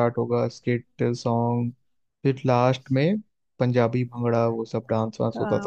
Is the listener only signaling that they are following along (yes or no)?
no